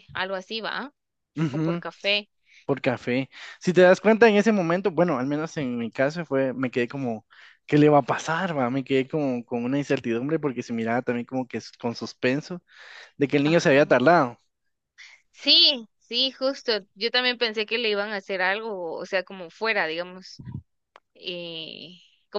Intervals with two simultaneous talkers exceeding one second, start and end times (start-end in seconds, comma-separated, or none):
none